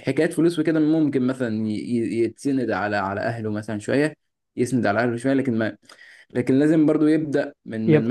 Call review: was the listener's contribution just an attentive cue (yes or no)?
yes